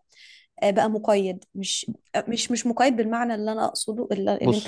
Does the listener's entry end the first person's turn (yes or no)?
no